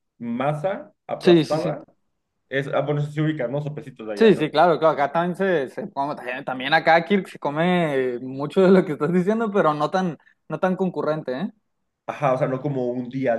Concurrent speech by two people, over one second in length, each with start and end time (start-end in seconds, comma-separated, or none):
none